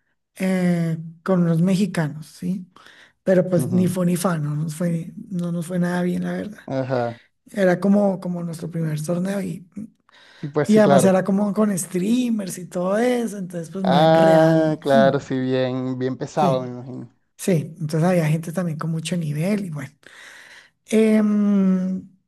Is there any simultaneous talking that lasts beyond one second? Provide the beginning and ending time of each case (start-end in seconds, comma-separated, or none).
13.8-15.3